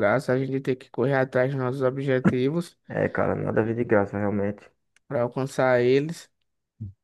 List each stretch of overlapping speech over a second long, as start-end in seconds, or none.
none